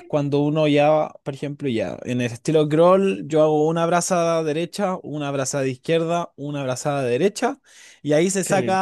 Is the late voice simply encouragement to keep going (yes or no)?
yes